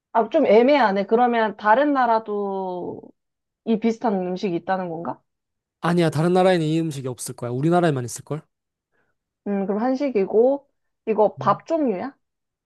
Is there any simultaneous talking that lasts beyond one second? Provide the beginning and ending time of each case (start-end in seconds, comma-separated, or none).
none